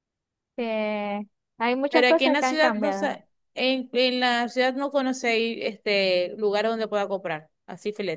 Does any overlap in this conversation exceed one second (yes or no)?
yes